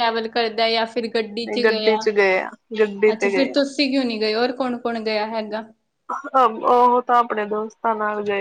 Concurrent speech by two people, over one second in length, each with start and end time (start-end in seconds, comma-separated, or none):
none